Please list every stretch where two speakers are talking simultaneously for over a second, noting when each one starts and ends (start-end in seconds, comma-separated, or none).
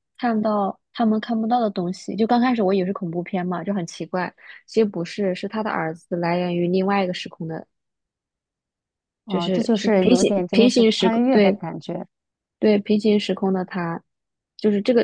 9.3-11.6